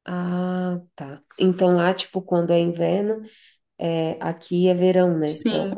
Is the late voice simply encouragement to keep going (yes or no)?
no